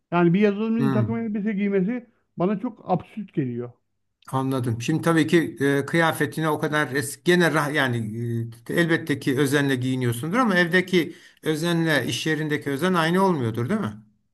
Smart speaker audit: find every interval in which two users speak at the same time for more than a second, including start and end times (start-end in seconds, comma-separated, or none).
none